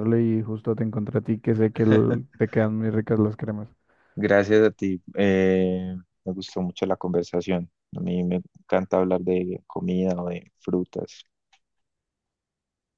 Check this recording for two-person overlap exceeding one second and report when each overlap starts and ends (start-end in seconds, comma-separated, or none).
none